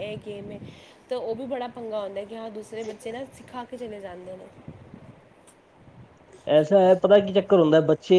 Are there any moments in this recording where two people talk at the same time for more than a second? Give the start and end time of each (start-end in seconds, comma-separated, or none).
none